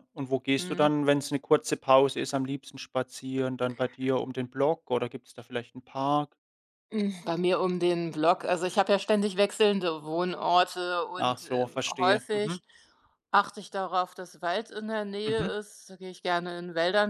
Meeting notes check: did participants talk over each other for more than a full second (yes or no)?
yes